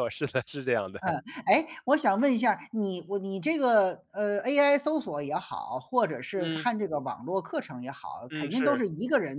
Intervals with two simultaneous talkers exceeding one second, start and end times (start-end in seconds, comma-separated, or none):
none